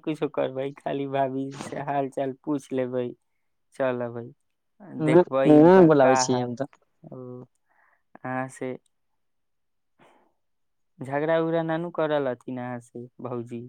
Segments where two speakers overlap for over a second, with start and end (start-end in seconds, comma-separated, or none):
5.1-6.5